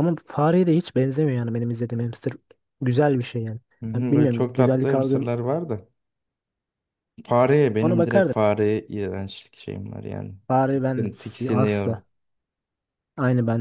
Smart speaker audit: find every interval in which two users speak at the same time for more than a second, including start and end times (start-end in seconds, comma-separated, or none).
3.8-5.3, 10.5-12.0